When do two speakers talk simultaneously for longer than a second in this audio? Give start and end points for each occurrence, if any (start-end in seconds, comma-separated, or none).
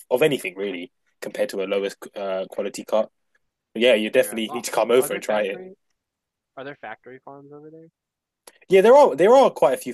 4.1-5.6